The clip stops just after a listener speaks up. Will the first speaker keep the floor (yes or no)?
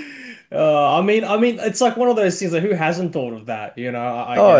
no